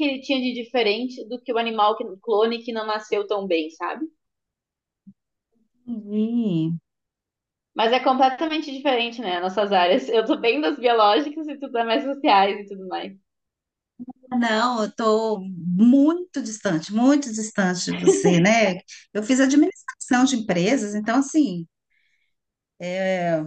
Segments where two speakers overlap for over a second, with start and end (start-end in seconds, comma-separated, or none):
none